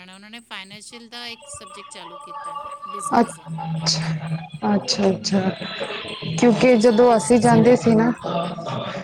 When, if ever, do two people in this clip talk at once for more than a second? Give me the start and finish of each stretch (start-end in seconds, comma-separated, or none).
6.7-8.1